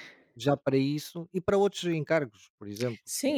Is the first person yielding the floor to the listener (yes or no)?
yes